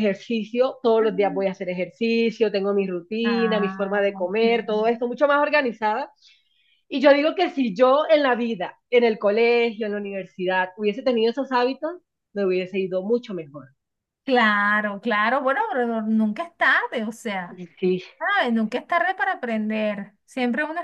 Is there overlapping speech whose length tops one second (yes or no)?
yes